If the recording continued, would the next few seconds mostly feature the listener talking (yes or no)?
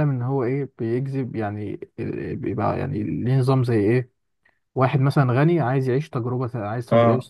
no